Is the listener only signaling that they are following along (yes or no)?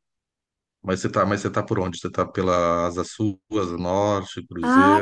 no